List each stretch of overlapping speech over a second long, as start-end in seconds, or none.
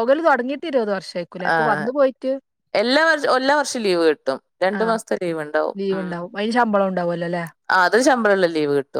none